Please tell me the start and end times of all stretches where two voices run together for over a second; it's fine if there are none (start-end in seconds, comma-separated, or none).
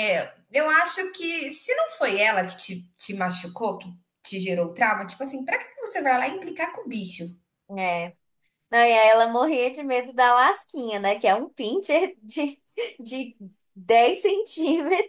none